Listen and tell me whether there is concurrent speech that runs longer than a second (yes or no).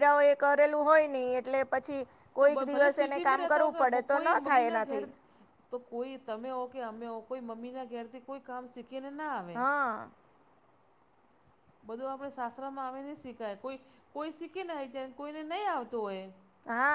yes